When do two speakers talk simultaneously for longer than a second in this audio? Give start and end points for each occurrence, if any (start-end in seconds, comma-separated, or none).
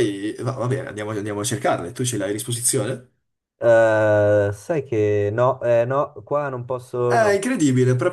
none